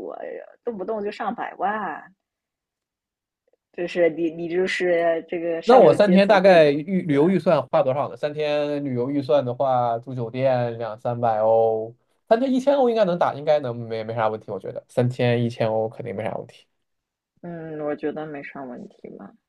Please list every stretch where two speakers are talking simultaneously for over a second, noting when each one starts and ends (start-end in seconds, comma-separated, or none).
5.6-7.2